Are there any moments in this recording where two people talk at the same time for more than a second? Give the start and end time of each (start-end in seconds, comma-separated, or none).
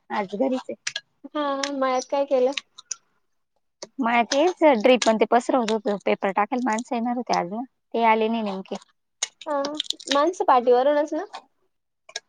none